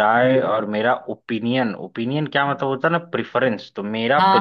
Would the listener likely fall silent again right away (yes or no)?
yes